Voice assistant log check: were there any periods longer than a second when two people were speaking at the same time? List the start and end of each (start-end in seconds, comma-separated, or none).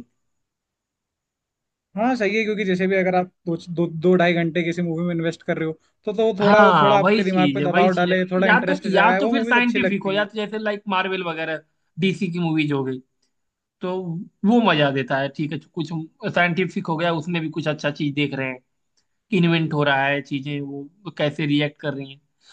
6.4-10.3